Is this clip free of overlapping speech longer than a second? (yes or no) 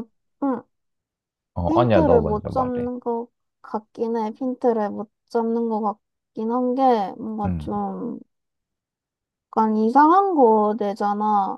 no